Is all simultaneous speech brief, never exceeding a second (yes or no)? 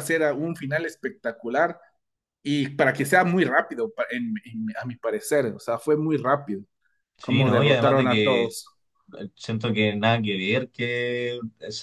no